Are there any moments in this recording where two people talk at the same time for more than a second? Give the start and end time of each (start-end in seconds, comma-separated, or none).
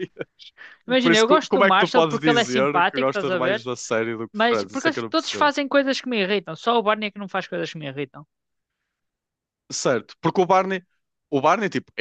1.0-3.6, 4.3-5.5